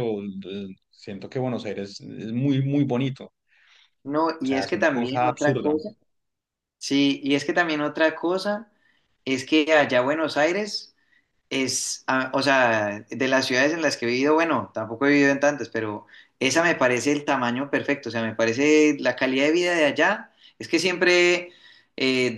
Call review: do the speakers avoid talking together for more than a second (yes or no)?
no